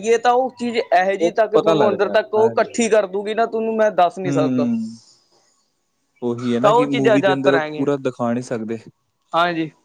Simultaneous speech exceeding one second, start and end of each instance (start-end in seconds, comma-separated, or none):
1.2-2.9, 6.6-7.9